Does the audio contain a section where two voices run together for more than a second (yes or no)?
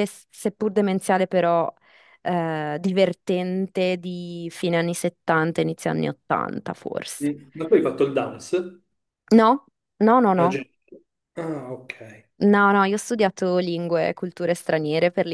no